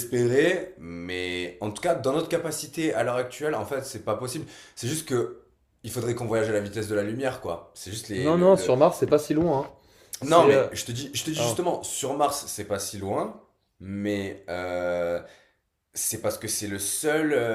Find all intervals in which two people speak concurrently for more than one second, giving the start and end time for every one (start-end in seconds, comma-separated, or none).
none